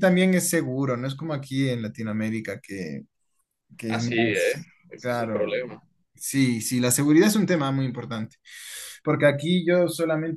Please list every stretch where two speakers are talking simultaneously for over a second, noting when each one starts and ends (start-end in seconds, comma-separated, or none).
3.9-5.6